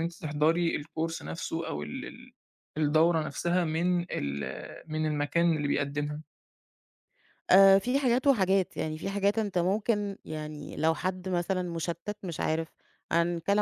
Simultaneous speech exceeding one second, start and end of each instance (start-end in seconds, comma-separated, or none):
none